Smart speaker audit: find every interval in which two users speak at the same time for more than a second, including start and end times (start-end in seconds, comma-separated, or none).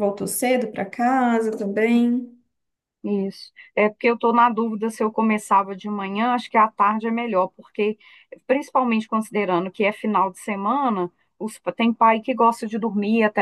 none